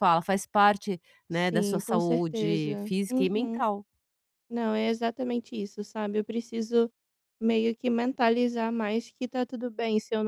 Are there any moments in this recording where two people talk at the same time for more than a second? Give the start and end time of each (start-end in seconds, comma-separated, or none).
1.3-3.6